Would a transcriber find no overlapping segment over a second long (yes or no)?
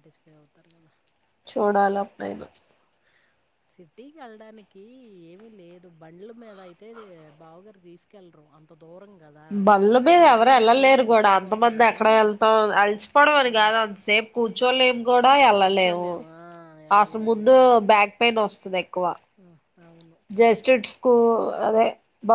no